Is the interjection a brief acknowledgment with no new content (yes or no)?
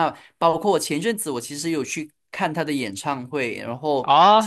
no